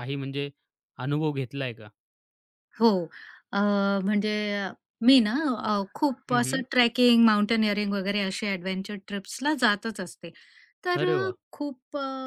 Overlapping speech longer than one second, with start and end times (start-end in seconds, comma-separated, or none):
none